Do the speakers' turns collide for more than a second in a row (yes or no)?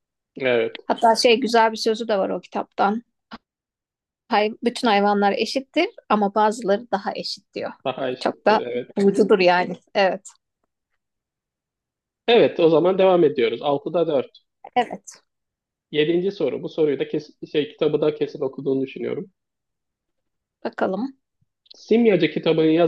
no